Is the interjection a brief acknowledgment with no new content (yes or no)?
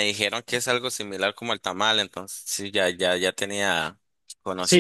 no